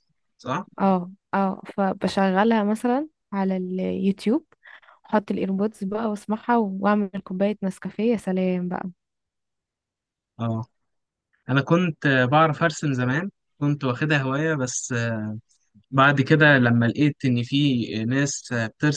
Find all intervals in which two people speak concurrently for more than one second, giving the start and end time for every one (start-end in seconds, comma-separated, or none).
none